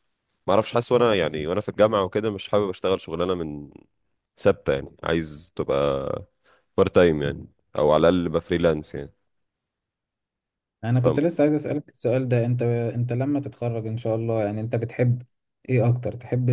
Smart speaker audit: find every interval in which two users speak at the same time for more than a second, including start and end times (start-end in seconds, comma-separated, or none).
none